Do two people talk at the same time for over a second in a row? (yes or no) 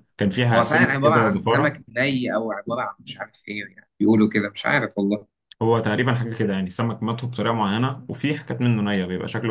yes